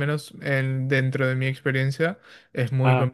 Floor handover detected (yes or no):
no